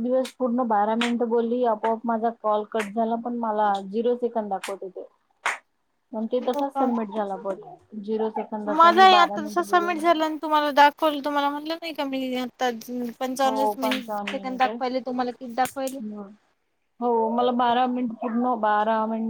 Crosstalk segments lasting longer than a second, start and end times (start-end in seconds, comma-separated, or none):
13.4-14.7